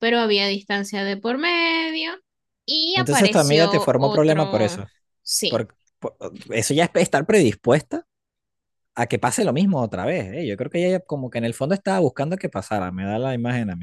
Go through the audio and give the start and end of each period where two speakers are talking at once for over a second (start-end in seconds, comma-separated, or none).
2.9-4.8